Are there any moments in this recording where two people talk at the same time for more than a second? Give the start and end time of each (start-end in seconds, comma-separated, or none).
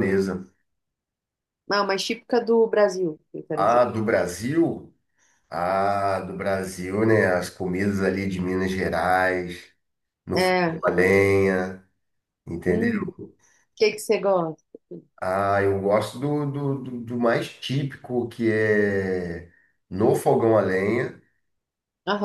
none